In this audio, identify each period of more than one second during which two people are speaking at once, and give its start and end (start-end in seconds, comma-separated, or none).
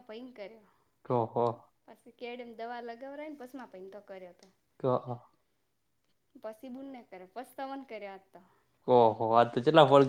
none